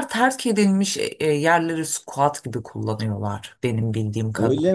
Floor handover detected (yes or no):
yes